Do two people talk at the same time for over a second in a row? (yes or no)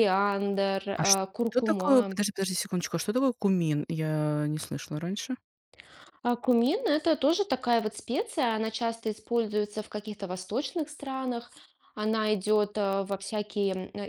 yes